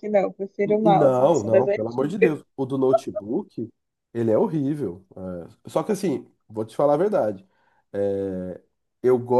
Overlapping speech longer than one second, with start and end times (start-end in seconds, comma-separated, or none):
0.7-2.4